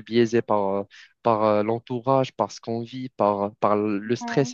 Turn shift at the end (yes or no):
no